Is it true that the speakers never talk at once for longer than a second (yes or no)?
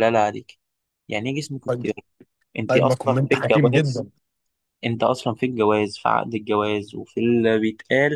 no